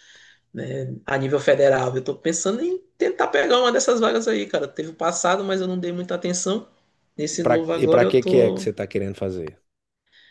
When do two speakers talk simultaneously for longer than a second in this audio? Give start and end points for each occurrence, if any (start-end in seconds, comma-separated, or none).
7.3-8.7